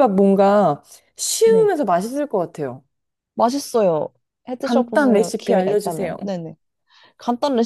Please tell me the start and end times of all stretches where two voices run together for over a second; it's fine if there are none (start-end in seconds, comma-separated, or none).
4.6-6.2